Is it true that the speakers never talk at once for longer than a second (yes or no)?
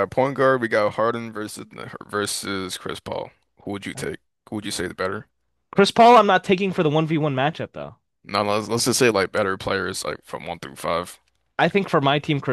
yes